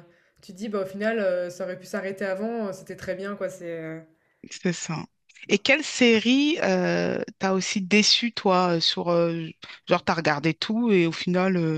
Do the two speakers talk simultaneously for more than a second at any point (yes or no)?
no